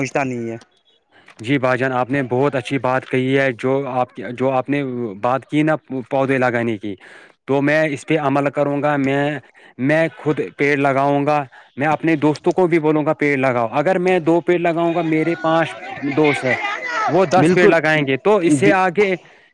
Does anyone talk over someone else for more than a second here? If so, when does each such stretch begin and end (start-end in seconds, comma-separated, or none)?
17.4-18.7